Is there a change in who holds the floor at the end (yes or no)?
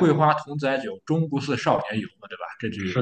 yes